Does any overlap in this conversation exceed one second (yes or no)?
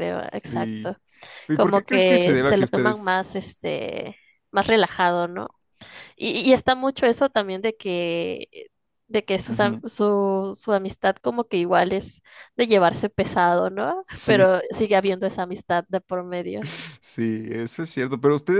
yes